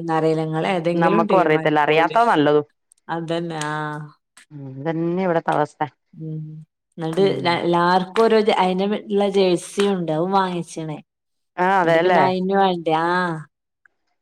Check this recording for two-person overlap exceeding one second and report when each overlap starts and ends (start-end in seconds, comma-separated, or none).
1.0-2.2